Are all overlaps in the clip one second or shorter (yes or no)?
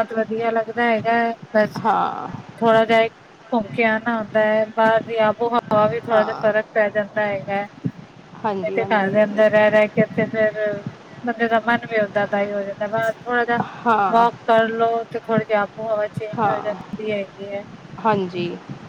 yes